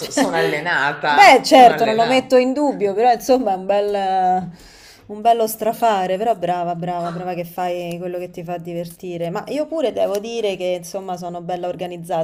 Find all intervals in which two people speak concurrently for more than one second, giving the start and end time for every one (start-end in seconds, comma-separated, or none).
1.0-2.3